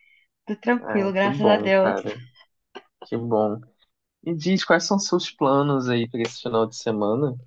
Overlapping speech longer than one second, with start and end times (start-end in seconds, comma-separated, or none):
0.8-2.0